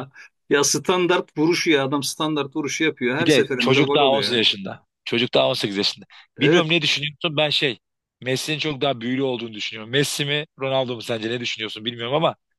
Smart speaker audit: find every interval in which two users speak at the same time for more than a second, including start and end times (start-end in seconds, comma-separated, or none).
3.2-4.4